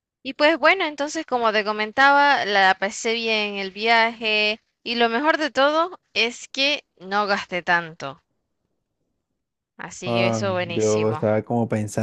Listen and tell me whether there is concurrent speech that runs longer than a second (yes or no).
yes